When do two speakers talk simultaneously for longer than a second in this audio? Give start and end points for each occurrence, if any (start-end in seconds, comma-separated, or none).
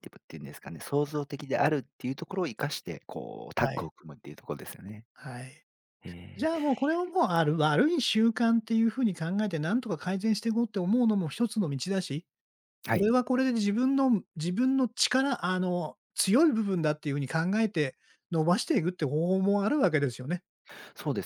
none